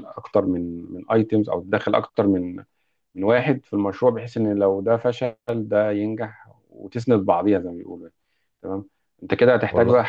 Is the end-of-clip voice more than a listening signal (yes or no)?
no